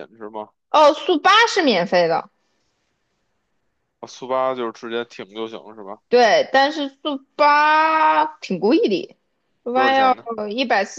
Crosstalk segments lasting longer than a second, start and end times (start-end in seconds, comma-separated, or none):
none